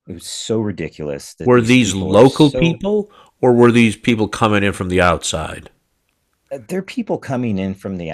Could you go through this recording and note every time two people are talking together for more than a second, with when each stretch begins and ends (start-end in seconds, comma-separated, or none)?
1.4-2.9